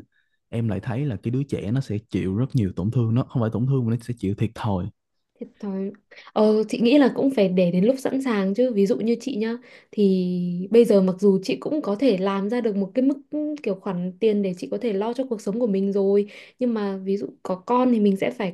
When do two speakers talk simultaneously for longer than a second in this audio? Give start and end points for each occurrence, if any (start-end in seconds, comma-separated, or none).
none